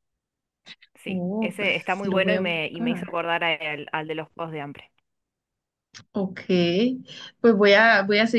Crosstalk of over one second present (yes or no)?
yes